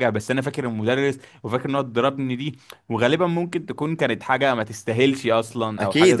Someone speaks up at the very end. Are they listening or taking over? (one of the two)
taking over